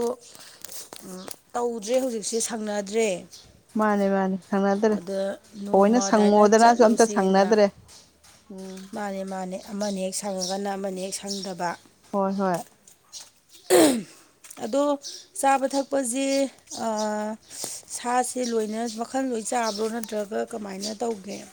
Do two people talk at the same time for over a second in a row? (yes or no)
yes